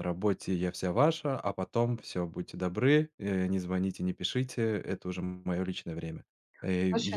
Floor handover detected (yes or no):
no